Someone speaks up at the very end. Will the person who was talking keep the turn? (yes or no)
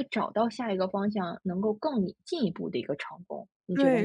no